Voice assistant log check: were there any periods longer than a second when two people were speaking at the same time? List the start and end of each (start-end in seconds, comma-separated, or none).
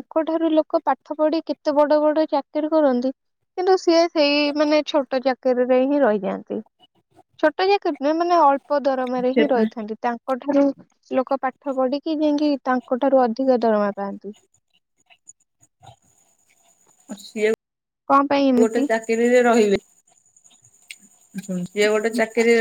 none